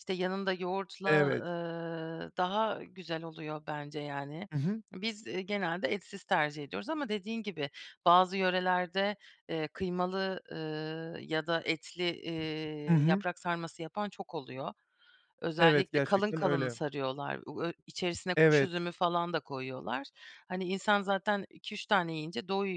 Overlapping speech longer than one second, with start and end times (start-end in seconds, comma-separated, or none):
15.6-16.8